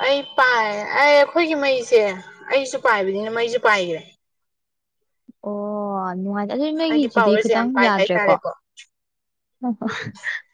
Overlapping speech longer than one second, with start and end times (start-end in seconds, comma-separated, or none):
6.9-8.3